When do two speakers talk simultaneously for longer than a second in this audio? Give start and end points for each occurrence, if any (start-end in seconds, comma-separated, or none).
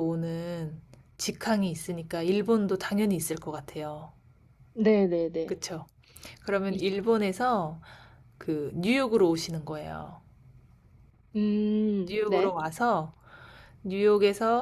none